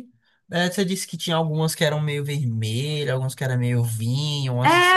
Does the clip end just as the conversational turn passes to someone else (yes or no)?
yes